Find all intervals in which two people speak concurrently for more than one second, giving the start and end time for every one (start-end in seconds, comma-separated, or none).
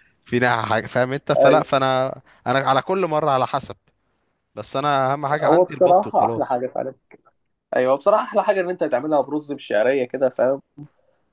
5.3-6.6